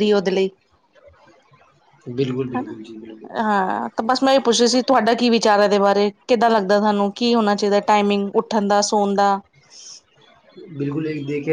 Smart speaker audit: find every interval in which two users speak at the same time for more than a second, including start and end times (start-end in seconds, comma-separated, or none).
none